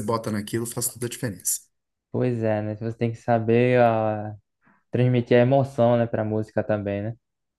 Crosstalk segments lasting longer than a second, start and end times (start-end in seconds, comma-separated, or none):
none